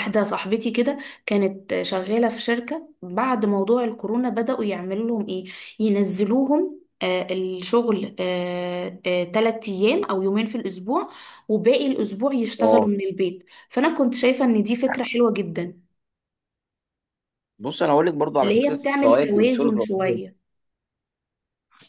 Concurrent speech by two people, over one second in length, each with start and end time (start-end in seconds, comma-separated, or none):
18.4-20.2